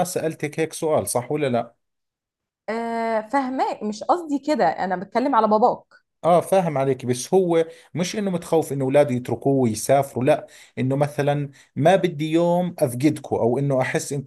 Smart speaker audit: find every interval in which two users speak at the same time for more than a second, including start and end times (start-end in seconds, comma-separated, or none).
none